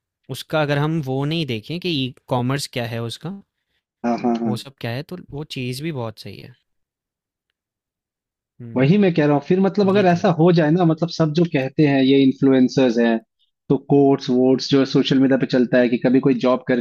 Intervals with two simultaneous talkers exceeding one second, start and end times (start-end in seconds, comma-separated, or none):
none